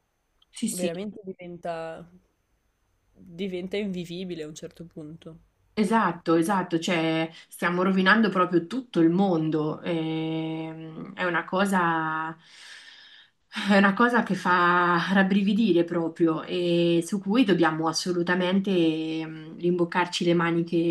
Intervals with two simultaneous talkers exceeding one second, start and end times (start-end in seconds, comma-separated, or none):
none